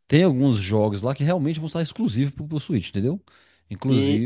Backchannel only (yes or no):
no